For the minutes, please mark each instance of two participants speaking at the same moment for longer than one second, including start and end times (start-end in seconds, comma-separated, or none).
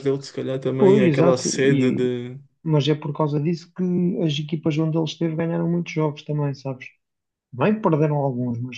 0.8-2.1